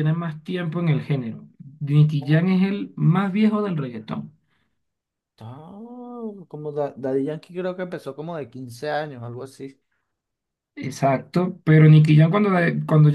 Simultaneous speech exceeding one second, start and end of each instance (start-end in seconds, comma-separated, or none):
none